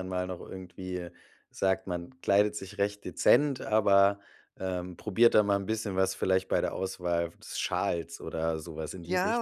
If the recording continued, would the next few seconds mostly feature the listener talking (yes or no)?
yes